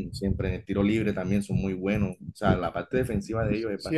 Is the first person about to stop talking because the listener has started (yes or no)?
yes